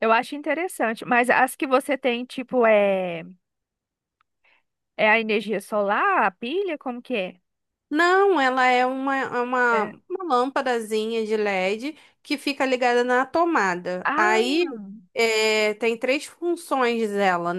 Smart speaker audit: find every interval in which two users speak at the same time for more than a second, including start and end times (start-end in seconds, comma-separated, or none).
none